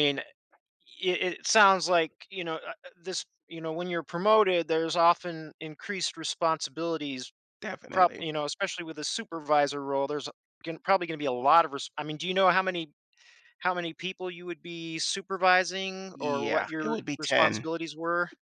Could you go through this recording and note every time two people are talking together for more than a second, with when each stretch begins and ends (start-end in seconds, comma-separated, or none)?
16.1-17.7